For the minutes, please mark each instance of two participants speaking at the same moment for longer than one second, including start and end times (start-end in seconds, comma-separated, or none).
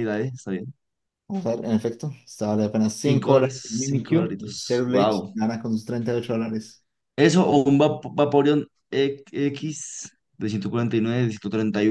3.0-5.4